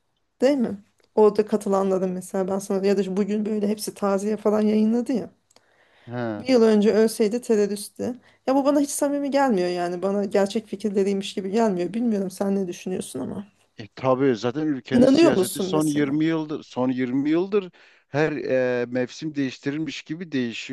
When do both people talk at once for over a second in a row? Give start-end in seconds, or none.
14.9-16.1